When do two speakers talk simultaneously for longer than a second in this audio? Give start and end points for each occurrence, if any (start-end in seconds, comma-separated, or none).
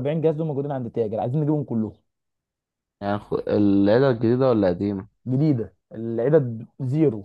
none